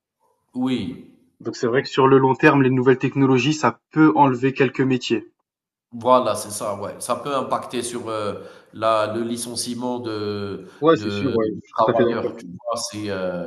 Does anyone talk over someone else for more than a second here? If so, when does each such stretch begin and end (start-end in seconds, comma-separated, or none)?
10.8-12.3